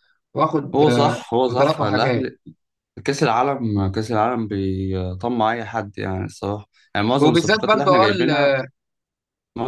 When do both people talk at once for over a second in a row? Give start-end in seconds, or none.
0.7-2.3, 7.2-8.6